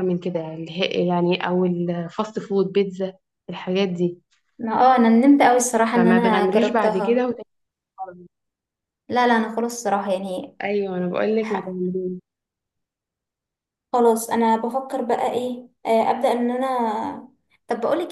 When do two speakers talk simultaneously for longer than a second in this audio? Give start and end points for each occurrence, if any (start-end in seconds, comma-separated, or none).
5.9-7.3